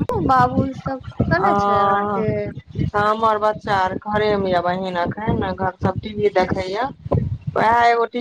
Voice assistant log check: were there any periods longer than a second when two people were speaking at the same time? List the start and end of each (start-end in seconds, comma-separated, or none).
none